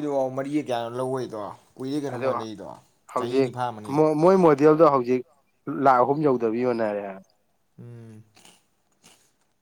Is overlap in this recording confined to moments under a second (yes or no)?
yes